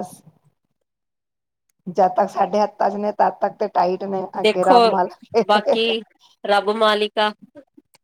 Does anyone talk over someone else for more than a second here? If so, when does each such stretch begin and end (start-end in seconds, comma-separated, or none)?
none